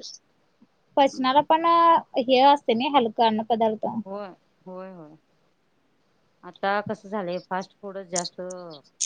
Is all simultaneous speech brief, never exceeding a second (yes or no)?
yes